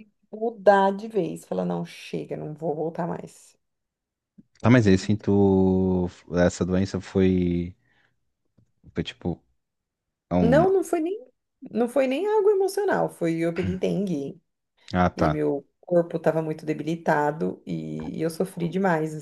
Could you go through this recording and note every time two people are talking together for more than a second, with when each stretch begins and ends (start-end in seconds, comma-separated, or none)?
none